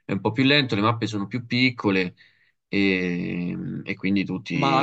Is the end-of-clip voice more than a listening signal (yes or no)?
yes